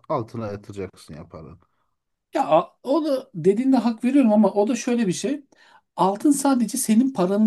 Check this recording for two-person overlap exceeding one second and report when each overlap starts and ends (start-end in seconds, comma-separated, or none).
none